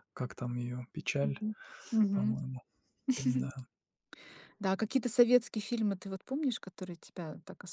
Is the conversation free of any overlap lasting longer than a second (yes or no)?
yes